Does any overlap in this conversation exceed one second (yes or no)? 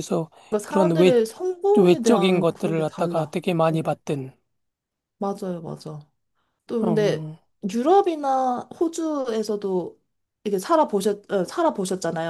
yes